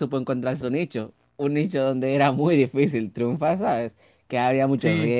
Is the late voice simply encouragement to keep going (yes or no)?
no